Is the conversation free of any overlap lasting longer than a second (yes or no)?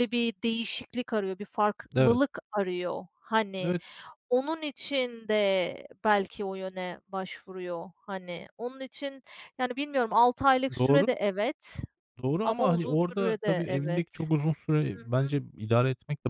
no